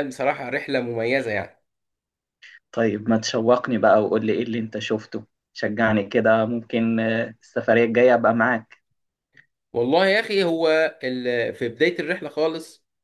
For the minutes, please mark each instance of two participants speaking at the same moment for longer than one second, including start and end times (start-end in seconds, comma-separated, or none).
none